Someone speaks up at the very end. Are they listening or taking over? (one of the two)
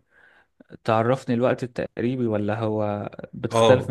taking over